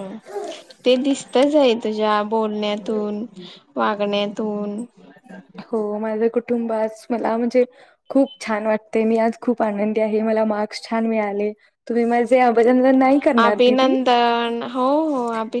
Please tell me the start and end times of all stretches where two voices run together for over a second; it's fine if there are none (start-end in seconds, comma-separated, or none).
none